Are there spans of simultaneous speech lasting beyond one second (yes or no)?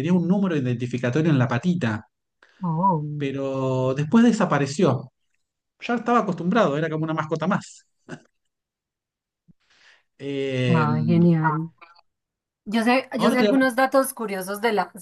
no